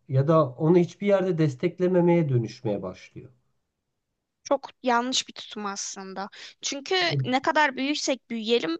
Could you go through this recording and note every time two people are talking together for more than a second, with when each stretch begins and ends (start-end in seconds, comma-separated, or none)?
none